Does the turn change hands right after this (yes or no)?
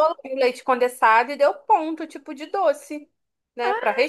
yes